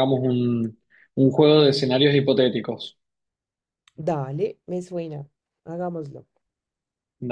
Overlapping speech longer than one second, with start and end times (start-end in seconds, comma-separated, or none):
none